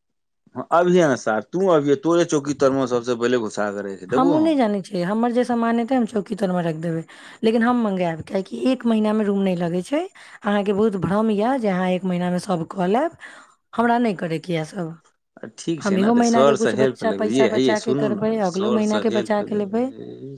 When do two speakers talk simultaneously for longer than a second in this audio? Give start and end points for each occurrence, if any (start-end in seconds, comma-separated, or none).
17.2-19.4